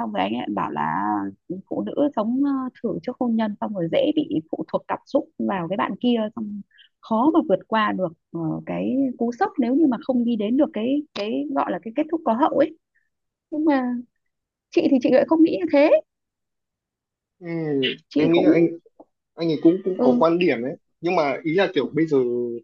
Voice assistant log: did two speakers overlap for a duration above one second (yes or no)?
no